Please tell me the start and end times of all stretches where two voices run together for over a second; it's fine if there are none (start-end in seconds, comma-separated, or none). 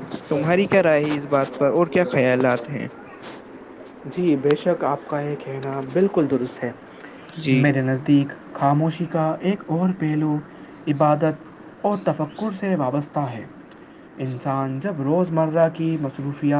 1.4-2.9